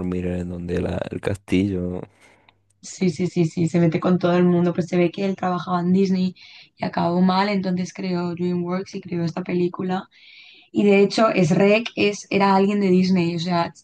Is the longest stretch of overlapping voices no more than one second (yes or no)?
yes